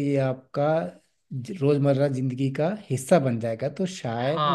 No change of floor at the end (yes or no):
no